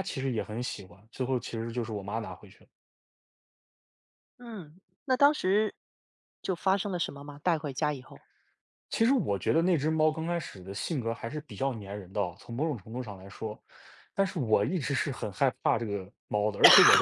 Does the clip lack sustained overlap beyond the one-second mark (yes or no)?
yes